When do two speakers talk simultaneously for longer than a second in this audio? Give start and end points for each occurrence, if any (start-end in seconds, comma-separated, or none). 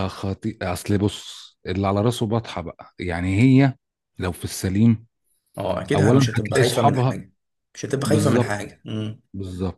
5.9-7.2